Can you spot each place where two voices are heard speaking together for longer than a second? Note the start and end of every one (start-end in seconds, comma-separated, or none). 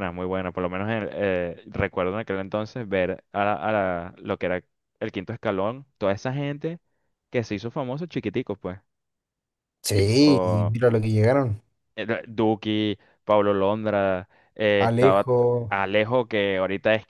none